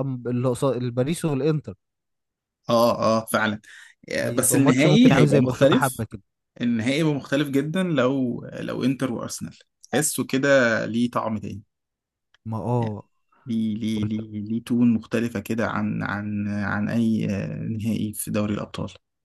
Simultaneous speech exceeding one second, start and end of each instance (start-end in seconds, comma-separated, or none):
4.2-6.0